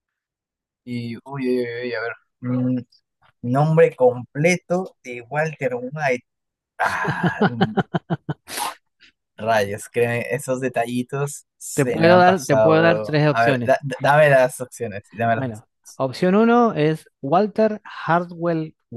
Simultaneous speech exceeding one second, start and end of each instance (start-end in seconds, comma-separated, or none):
11.7-13.8